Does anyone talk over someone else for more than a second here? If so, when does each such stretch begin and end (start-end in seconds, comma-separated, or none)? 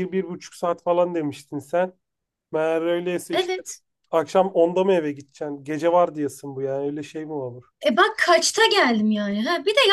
none